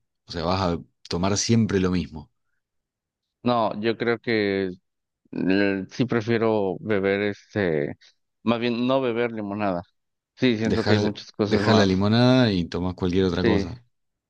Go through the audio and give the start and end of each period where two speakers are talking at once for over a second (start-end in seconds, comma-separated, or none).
10.6-12.1